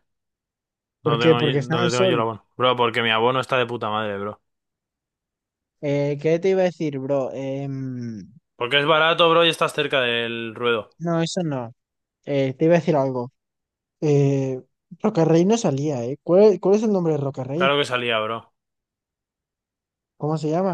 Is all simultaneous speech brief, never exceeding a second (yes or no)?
no